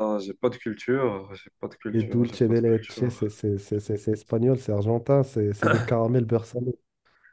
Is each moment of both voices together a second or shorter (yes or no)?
no